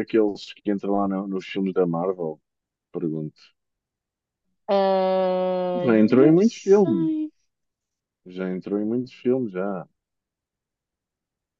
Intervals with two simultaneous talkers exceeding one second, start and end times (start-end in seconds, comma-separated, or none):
5.8-7.1